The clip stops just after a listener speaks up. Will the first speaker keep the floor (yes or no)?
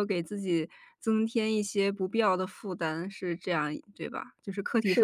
no